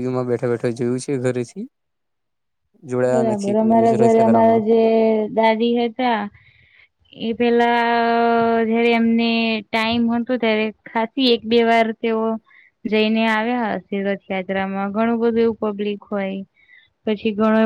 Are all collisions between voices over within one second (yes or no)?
no